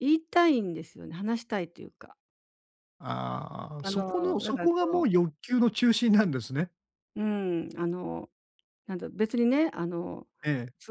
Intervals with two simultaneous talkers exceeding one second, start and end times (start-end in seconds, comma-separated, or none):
3.8-5.0